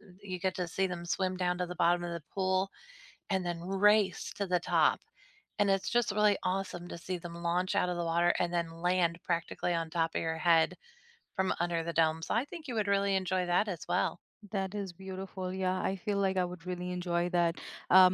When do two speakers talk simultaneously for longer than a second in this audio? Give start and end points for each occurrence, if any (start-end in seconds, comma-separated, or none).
none